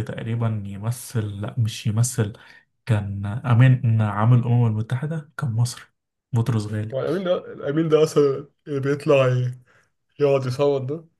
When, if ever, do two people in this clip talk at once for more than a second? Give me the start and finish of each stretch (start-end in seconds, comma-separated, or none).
none